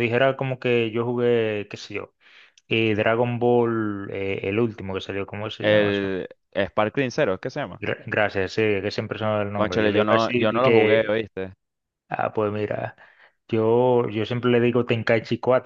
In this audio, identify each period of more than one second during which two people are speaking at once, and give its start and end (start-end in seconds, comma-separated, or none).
9.5-11.2